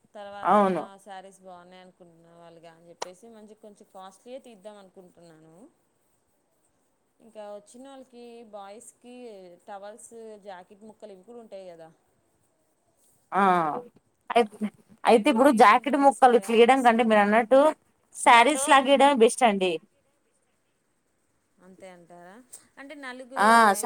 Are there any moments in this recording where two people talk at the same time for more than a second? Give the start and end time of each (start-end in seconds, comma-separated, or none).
15.1-17.2